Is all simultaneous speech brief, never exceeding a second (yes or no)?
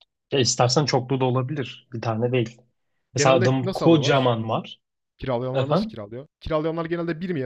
no